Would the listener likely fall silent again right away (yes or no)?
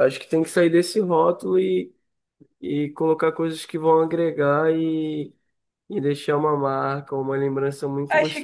no